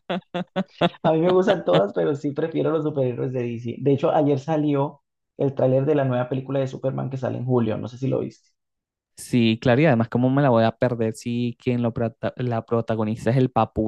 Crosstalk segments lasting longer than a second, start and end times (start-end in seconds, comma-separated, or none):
none